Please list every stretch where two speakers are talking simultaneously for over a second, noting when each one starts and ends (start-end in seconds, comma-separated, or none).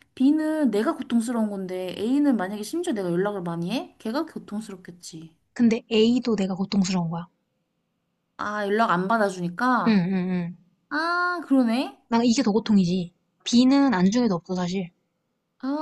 none